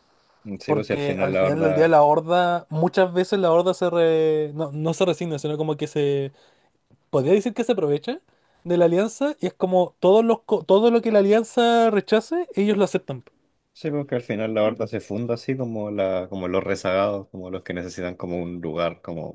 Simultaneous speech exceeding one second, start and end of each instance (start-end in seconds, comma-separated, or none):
0.7-1.9